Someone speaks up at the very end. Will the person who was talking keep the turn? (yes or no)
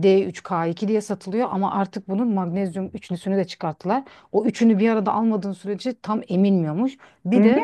yes